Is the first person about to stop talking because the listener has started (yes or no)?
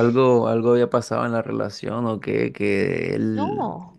no